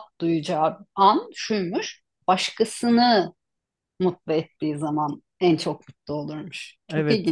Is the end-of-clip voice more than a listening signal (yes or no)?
yes